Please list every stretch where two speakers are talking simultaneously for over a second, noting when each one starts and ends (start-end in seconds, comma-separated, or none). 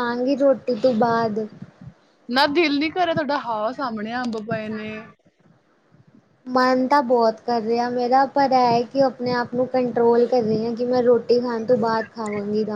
none